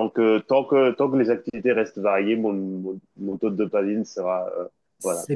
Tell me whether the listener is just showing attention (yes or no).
no